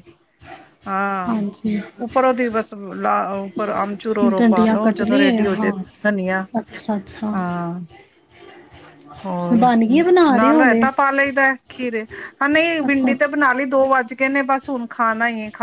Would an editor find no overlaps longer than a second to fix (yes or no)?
no